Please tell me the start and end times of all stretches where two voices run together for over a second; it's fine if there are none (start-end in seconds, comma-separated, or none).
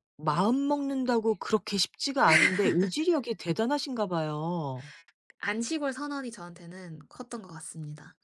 none